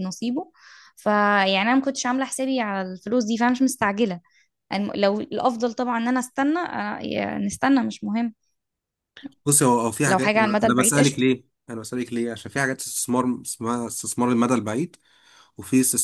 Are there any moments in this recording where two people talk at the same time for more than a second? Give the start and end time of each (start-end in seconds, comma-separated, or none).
10.1-11.2